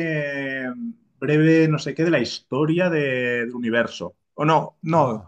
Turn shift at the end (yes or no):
no